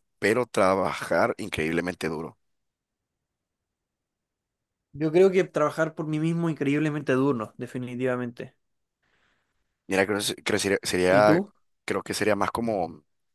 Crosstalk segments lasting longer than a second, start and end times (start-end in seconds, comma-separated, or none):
none